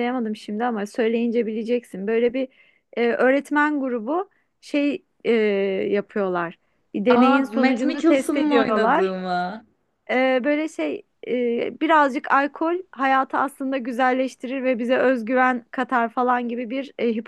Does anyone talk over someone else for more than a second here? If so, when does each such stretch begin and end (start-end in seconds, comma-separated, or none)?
7.1-9.1